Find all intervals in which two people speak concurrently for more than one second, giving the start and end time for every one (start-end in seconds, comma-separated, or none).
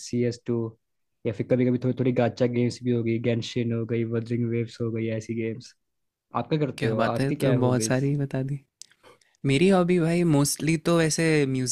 6.8-8.0